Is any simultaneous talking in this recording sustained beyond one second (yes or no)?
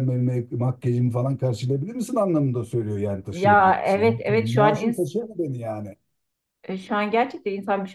yes